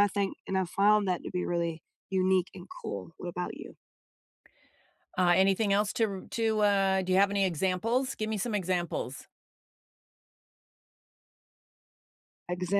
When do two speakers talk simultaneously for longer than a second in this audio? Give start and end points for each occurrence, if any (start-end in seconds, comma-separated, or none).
none